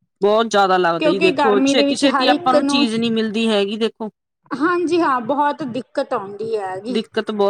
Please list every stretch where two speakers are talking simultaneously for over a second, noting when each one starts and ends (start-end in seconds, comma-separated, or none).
1.0-2.5